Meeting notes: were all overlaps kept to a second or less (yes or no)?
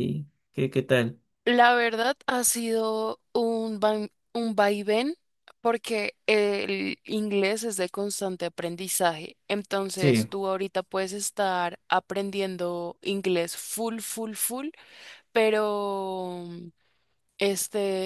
yes